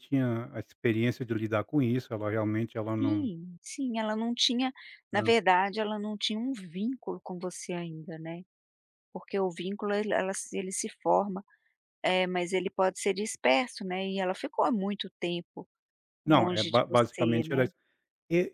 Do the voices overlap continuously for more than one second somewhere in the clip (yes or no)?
yes